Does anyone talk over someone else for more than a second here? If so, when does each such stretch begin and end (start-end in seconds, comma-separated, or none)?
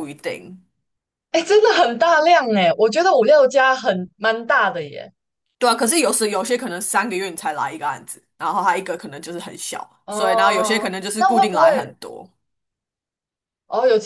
10.1-11.9